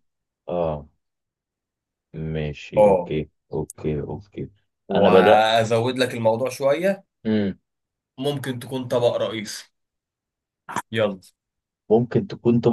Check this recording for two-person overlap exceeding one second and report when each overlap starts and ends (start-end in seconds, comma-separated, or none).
none